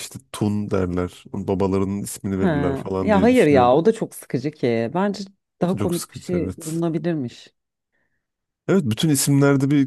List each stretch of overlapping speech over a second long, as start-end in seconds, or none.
2.3-3.9, 5.6-6.8